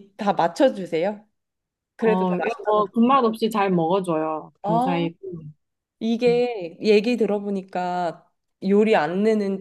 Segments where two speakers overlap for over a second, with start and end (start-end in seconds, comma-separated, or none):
2.0-3.2